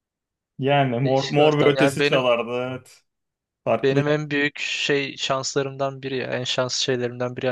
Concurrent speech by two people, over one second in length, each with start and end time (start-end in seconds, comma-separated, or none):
1.0-2.3